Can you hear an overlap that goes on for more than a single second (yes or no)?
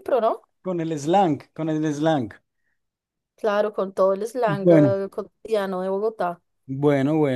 no